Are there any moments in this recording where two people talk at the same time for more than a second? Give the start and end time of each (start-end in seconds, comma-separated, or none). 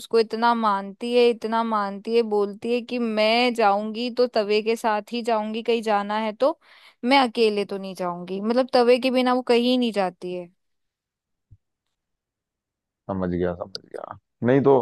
none